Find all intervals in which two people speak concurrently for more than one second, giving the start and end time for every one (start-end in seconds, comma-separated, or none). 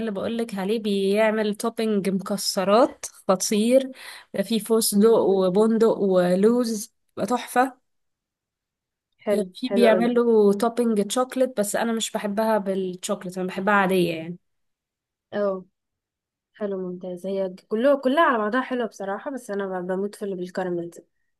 none